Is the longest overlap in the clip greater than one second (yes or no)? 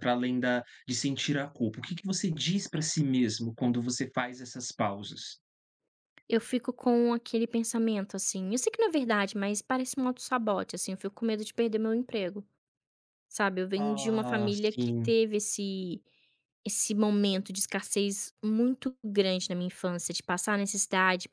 yes